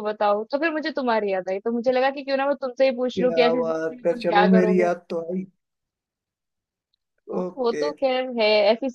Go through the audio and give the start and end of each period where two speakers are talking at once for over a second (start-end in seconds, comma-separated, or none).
3.2-4.9